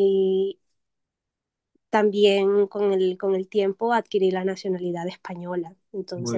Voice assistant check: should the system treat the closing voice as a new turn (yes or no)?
no